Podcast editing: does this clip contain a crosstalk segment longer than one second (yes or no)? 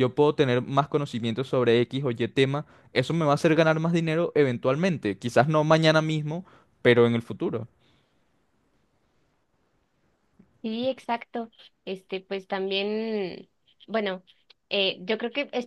no